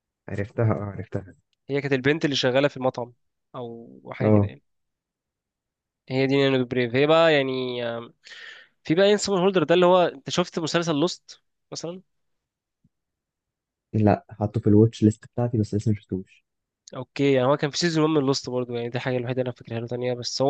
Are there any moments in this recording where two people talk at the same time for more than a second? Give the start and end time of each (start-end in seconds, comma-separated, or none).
none